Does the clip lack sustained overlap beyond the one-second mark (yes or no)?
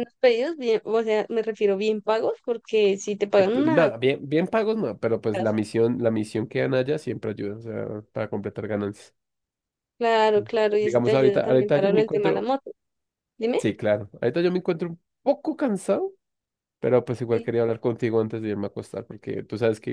no